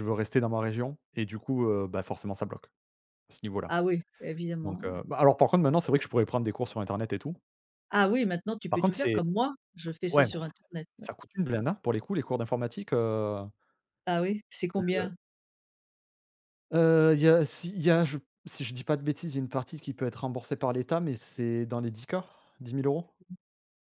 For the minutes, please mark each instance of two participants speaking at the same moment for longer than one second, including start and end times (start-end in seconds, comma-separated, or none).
none